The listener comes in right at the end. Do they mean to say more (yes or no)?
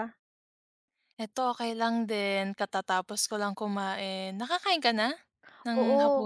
yes